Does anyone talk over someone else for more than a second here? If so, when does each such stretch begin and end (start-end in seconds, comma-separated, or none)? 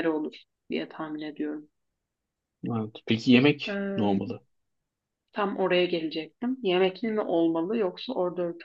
none